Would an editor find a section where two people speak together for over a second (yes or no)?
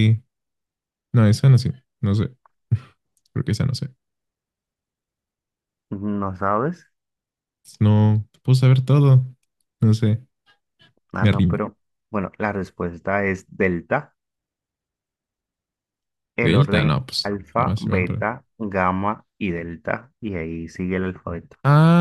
yes